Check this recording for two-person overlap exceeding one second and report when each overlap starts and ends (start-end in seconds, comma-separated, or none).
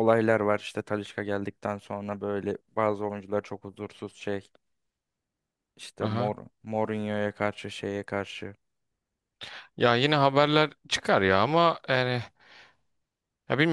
none